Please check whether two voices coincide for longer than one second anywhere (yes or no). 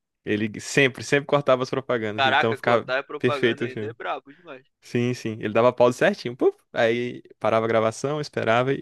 yes